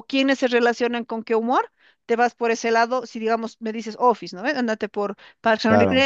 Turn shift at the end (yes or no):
no